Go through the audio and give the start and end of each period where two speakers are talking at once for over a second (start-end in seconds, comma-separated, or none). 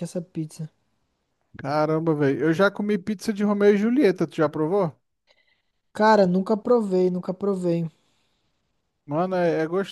none